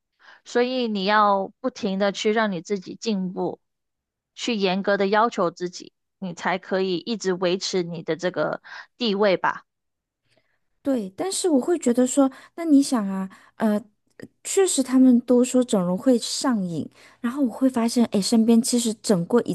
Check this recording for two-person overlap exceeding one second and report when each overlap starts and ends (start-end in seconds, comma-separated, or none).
none